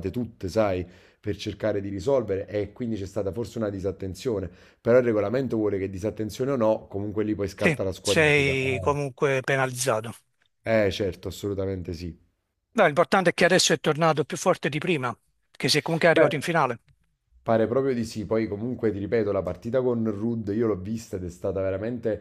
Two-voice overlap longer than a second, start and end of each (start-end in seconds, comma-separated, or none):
7.5-8.9